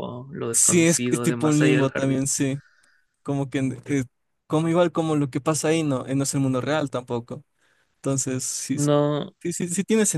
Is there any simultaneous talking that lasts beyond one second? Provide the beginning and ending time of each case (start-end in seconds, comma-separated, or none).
0.5-2.3